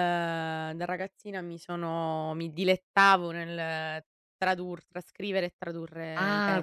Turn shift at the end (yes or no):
yes